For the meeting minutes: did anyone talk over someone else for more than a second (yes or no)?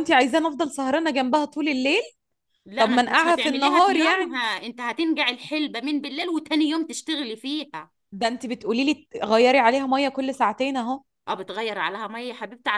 yes